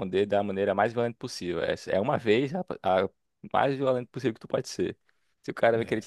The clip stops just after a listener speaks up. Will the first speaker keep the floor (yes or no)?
yes